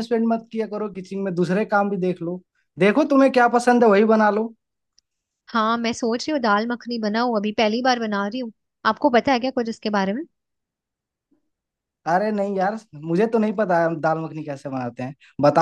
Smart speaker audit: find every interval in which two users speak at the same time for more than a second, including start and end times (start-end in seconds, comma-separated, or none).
none